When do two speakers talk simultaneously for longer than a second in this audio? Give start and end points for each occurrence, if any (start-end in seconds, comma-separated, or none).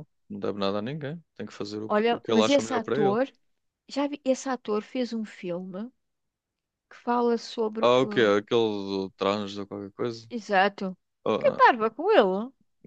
1.9-3.2